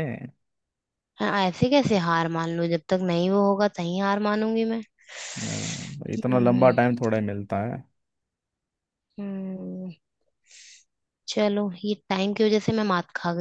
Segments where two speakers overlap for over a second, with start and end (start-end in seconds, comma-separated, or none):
none